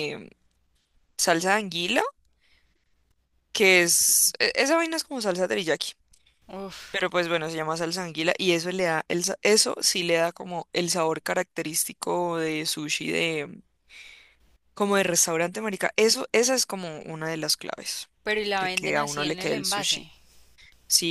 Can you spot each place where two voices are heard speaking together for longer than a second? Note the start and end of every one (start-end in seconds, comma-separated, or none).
18.6-20.1